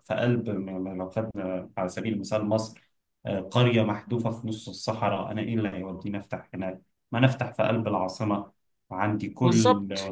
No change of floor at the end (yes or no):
yes